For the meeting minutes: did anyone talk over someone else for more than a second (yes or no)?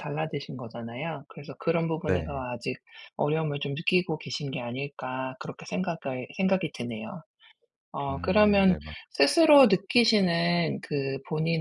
yes